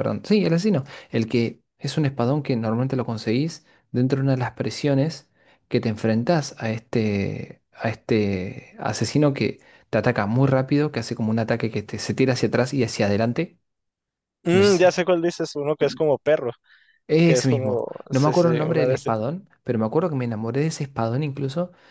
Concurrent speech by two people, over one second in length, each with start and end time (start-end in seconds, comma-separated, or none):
17.2-19.1